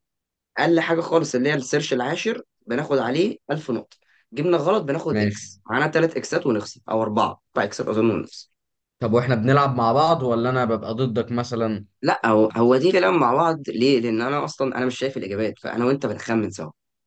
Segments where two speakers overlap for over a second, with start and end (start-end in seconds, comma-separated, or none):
none